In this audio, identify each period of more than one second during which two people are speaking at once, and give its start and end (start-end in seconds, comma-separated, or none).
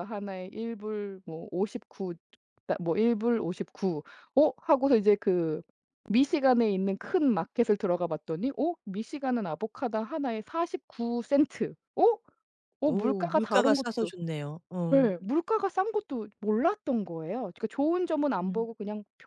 12.8-14.1